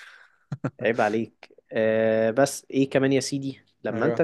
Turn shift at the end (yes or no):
no